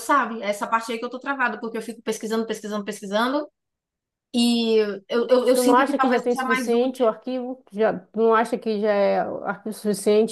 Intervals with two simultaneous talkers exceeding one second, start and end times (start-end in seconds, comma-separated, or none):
5.3-7.0